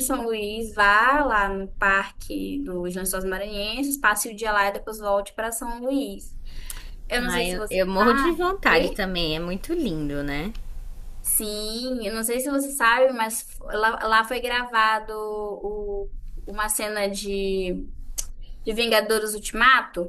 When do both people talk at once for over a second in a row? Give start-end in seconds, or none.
7.2-9.0